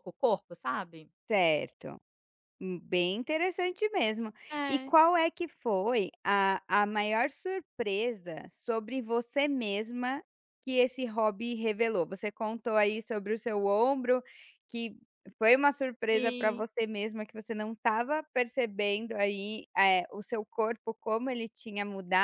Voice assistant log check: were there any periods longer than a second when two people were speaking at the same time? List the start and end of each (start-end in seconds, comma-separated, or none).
none